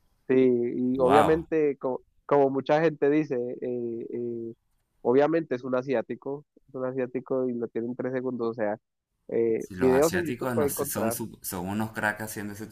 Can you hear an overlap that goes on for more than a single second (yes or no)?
yes